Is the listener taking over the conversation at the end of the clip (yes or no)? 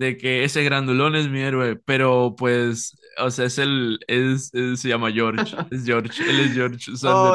yes